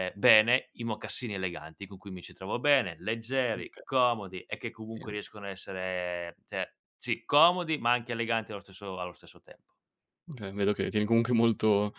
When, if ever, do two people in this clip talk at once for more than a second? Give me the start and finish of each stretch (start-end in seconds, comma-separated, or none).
none